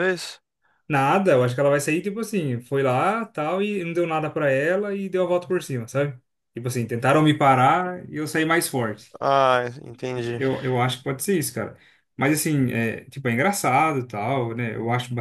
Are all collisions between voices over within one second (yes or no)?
yes